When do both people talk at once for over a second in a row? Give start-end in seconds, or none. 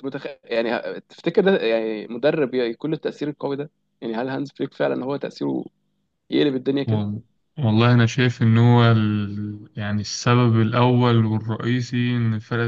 none